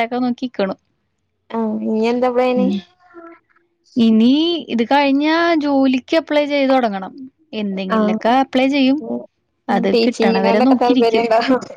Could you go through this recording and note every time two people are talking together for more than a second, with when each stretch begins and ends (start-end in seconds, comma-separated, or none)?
9.9-11.3